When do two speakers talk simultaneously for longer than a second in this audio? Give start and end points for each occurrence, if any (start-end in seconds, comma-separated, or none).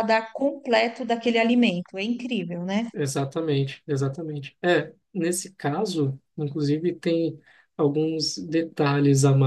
none